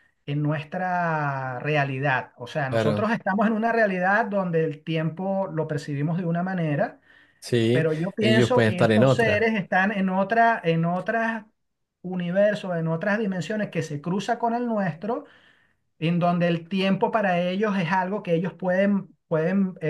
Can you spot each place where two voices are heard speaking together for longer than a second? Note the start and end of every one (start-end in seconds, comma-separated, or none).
7.7-9.5